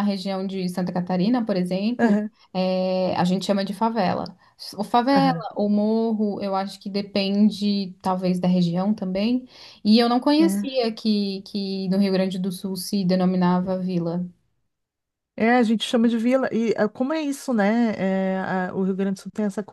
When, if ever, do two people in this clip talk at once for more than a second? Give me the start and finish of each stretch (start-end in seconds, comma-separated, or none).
none